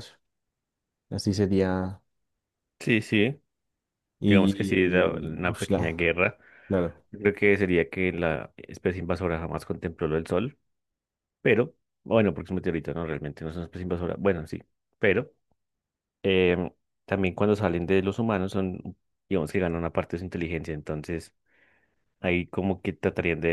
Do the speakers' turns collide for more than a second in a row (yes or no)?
yes